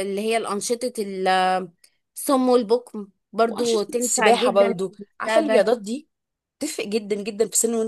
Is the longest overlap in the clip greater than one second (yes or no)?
yes